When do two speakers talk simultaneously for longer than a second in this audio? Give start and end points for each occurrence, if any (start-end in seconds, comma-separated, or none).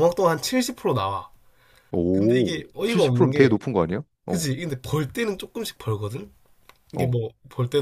2.1-3.6